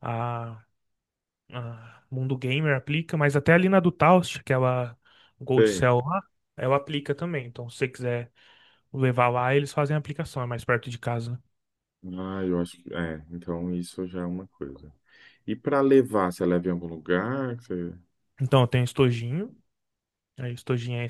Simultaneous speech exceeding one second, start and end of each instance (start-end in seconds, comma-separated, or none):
none